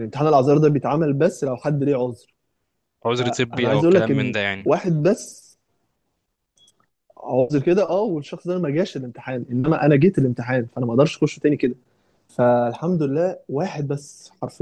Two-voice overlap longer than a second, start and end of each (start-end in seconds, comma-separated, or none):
3.2-4.7